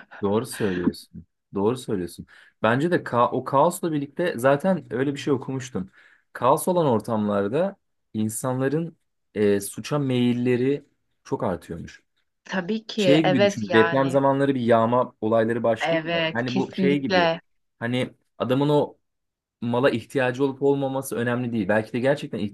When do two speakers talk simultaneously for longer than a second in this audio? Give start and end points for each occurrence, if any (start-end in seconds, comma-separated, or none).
12.9-14.2, 15.8-17.3